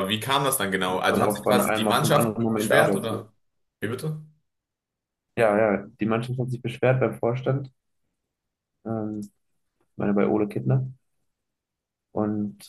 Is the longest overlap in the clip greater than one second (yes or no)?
yes